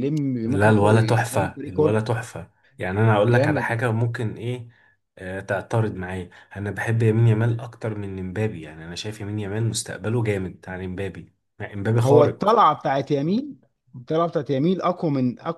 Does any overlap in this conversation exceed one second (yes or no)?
yes